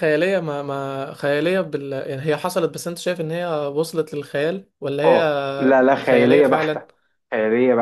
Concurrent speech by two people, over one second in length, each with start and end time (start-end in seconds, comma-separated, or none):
5.0-6.9